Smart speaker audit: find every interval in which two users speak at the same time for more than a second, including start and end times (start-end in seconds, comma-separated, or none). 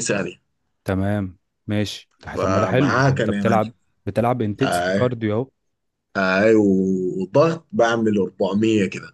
2.4-3.7